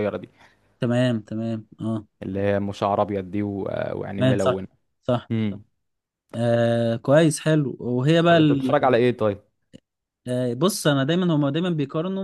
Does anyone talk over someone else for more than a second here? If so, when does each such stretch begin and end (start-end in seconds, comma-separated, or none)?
none